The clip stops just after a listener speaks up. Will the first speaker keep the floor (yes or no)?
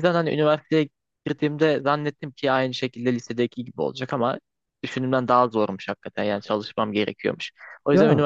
yes